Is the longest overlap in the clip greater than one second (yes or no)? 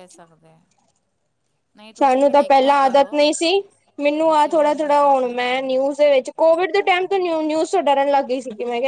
yes